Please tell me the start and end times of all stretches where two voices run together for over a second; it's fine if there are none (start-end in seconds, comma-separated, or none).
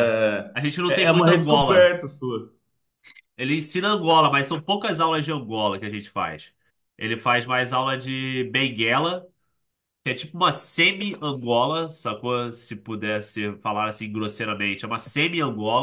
0.5-1.9